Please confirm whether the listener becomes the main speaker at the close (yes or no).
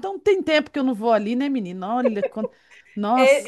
yes